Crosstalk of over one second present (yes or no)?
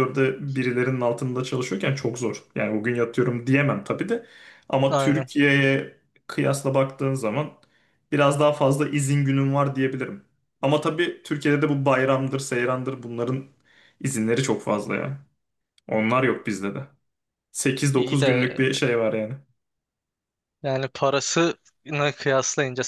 no